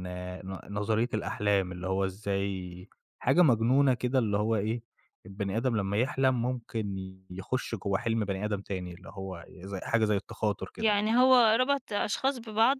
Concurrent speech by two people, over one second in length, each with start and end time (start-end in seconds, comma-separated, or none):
none